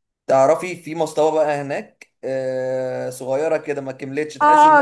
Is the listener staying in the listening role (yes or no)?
no